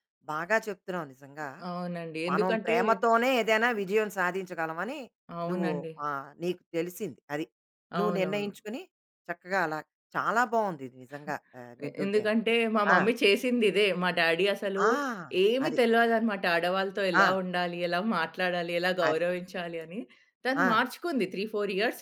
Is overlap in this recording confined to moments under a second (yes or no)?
yes